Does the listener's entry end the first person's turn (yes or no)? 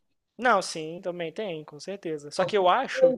yes